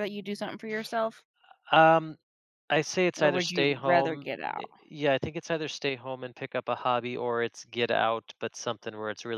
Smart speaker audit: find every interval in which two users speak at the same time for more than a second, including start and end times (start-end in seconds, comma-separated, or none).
3.2-4.7